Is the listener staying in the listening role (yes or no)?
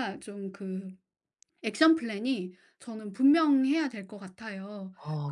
yes